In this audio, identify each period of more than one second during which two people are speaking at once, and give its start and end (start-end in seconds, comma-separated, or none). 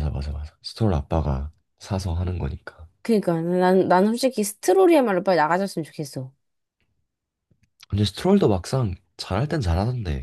none